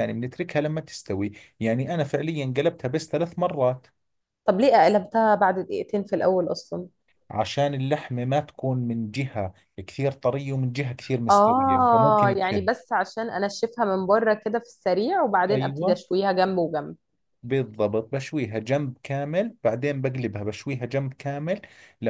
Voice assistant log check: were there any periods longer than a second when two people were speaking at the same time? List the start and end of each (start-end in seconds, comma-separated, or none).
11.3-12.7